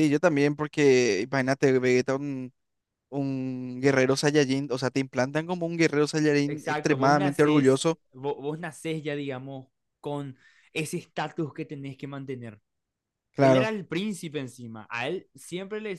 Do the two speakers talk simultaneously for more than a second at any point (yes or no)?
yes